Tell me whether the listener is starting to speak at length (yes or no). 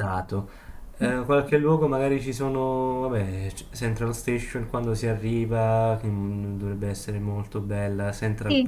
yes